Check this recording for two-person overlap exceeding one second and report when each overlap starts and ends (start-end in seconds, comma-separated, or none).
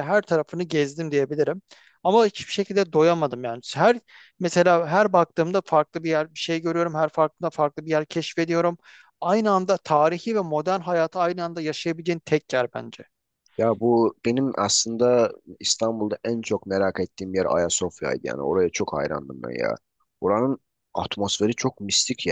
none